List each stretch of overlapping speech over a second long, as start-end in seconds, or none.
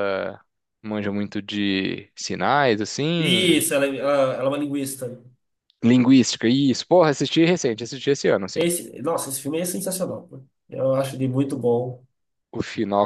none